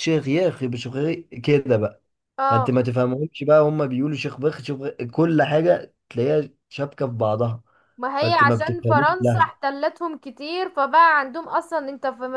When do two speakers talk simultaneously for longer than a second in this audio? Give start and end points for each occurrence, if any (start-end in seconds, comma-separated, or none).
8.2-9.6